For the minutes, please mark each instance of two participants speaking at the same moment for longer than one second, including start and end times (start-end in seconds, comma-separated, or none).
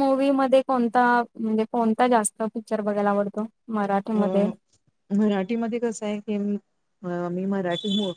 none